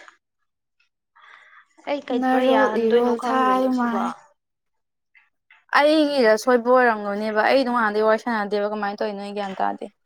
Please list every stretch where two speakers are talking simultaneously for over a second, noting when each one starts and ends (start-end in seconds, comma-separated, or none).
2.2-4.0